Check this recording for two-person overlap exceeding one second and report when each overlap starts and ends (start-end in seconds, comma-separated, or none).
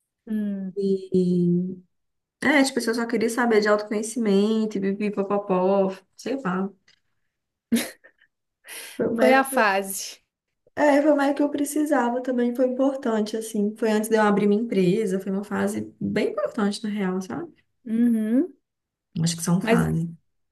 none